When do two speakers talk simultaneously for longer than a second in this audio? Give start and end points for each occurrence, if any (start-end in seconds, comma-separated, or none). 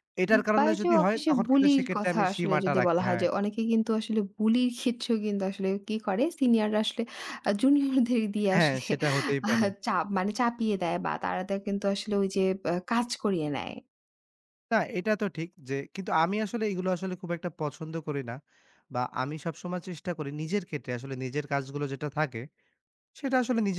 0.6-3.2